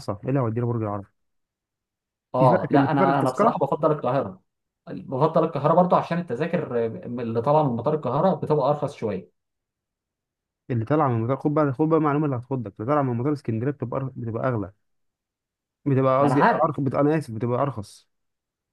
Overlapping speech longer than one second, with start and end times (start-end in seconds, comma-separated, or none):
2.4-3.6